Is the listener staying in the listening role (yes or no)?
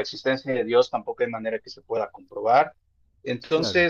yes